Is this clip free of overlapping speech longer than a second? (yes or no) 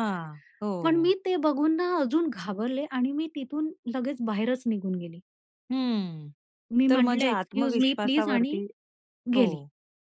no